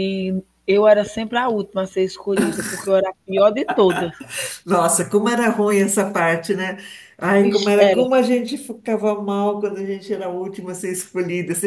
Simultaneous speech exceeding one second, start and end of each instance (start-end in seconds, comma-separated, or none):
none